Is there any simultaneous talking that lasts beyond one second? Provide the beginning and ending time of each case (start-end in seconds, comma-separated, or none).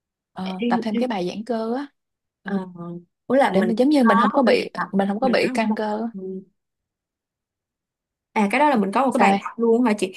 3.5-6.1